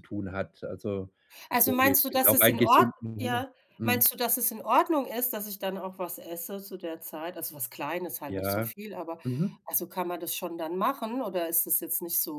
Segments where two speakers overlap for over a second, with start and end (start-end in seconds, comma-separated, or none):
1.5-4.1